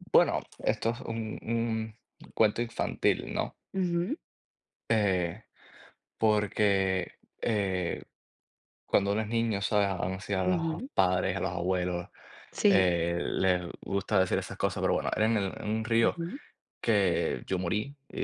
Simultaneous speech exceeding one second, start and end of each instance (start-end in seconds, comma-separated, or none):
none